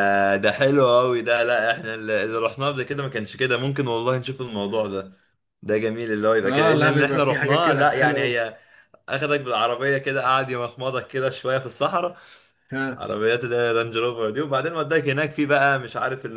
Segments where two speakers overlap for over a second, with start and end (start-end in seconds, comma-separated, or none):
6.4-8.4